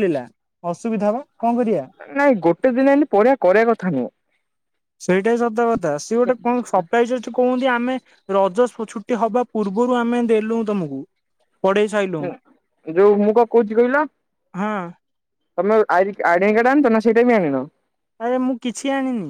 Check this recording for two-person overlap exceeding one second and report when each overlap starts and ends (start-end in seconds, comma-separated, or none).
none